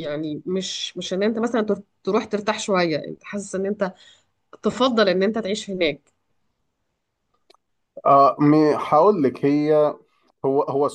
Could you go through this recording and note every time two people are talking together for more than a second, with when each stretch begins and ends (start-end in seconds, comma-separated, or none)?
none